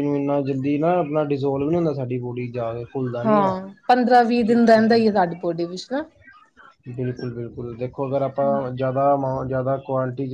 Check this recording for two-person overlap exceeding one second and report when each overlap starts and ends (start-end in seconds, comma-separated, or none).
none